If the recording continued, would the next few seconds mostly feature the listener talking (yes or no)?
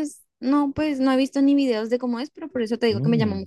no